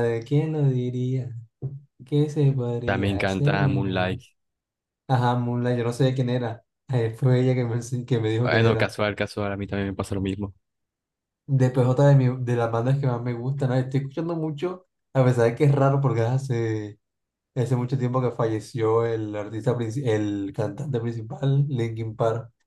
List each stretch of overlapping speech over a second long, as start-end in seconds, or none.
2.8-4.2